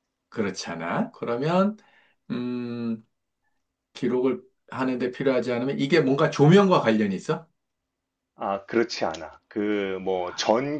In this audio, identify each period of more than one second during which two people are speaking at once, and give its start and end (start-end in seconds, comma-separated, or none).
none